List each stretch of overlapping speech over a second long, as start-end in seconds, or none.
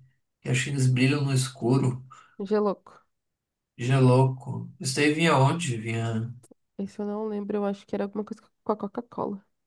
none